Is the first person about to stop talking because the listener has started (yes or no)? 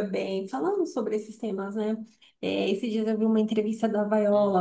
no